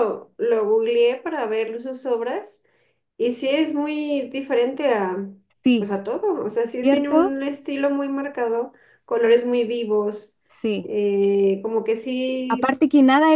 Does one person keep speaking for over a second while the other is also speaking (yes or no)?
no